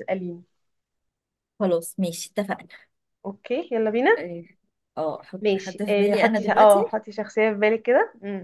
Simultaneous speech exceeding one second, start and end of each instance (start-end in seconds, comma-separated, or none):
5.4-6.8